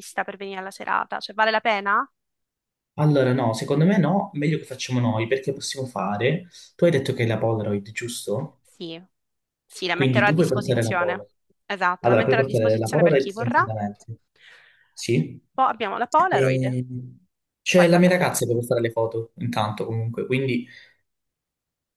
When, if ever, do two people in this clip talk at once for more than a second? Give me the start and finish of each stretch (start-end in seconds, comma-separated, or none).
9.9-11.2, 12.0-13.6